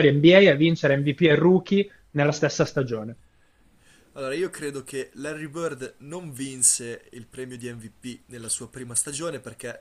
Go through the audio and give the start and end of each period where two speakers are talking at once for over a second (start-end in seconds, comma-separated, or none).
none